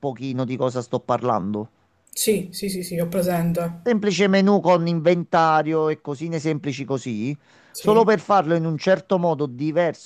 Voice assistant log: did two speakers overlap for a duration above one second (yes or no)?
no